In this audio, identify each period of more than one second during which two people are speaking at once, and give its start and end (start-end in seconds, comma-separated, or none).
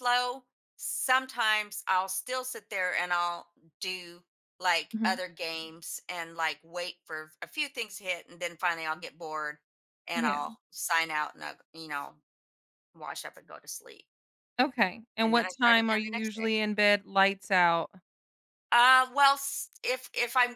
15.2-16.5